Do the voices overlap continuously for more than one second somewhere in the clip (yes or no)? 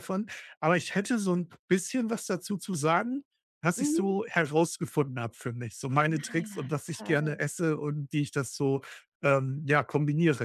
yes